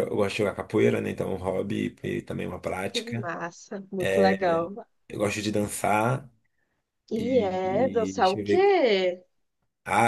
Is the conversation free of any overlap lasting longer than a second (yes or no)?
no